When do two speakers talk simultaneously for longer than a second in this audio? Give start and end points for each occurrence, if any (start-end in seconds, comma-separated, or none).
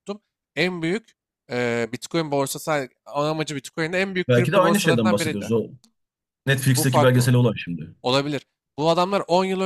4.3-5.5